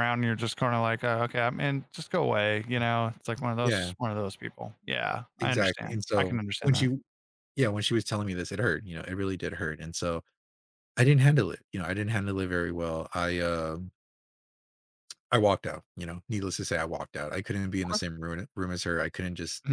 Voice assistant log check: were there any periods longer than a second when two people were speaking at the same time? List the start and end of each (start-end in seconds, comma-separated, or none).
5.4-6.9